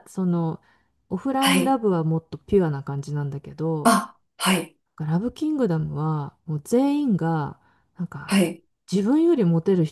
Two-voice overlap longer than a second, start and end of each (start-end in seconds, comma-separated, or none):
none